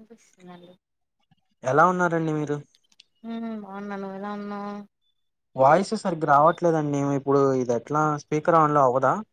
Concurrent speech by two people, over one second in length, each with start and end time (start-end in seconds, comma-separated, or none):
none